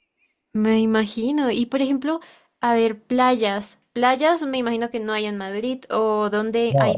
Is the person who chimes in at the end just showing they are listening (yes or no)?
no